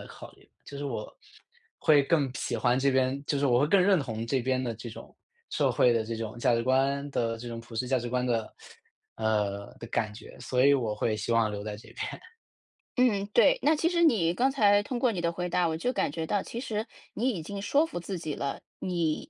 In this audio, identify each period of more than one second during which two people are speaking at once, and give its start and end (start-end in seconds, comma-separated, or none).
none